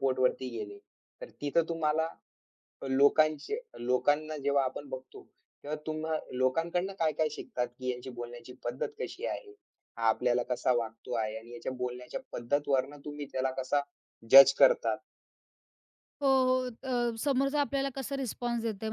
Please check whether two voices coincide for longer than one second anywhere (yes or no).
no